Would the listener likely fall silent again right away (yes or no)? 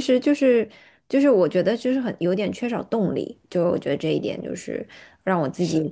yes